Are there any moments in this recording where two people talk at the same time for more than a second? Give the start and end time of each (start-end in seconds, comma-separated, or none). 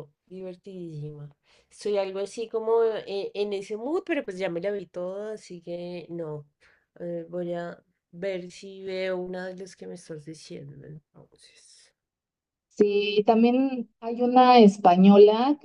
none